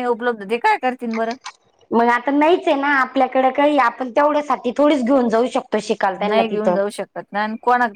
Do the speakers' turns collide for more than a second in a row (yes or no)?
no